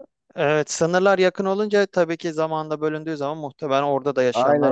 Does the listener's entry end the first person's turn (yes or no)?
yes